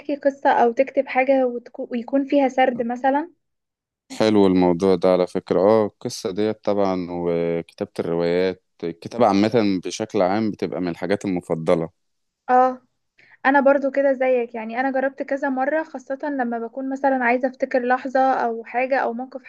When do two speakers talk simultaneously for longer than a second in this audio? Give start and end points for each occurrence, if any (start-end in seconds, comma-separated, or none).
none